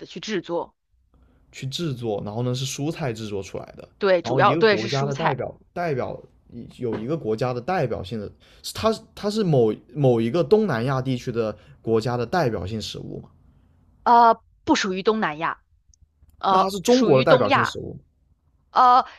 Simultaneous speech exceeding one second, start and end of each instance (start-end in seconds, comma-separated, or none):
4.0-5.3, 16.5-17.8